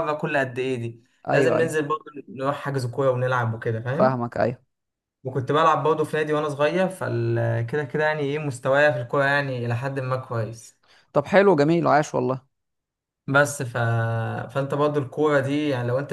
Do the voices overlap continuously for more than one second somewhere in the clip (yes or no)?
no